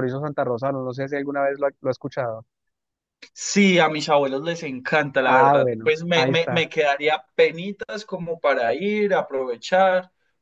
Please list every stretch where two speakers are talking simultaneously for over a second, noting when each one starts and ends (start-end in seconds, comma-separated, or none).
5.2-6.7